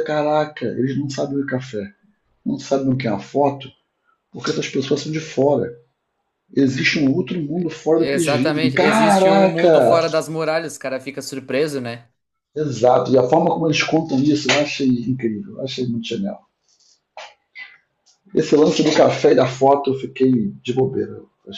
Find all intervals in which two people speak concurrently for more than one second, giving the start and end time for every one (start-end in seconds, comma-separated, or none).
8.0-10.0